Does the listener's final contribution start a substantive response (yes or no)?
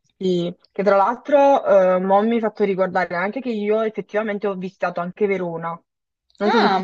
yes